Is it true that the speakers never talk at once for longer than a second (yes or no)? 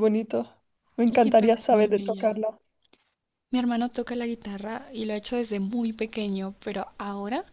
no